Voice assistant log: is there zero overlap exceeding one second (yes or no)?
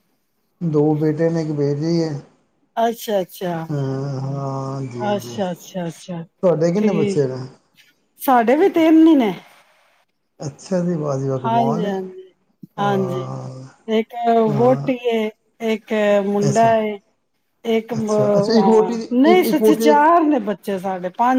no